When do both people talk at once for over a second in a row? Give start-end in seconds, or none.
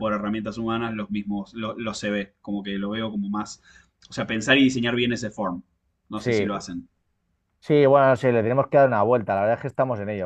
none